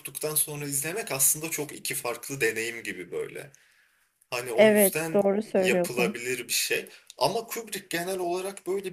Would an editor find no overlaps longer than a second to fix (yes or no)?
no